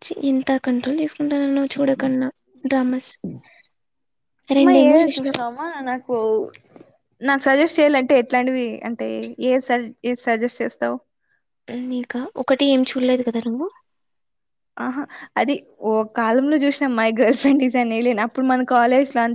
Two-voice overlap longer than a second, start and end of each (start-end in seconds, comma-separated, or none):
none